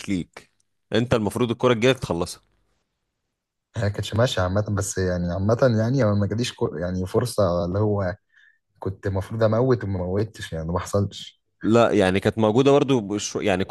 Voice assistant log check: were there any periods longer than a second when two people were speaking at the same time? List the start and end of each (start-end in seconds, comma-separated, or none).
none